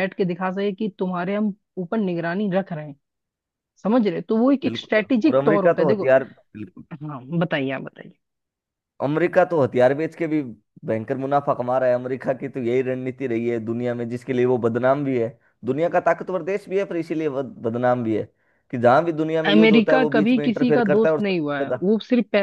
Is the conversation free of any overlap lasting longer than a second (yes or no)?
no